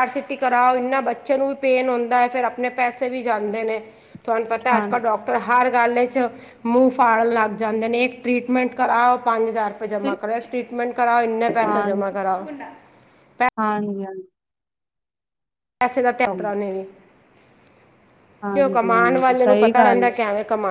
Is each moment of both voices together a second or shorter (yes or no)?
no